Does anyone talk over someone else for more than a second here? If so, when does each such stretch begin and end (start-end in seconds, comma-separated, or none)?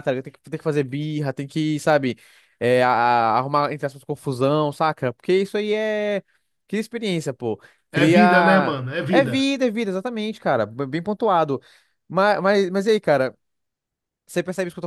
7.9-9.5